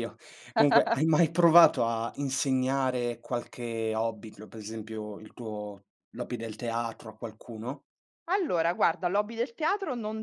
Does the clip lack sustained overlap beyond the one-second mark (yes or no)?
yes